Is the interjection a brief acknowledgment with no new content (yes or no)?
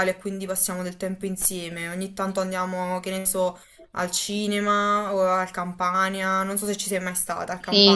no